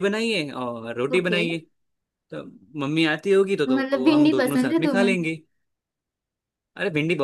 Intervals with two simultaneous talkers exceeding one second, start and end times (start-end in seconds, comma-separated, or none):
3.7-5.1